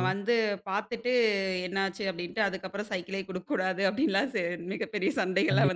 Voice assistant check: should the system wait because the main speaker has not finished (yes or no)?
no